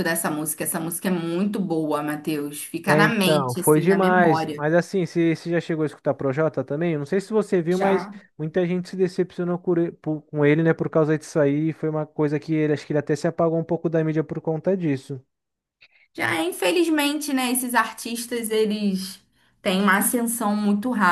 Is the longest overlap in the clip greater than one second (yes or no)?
yes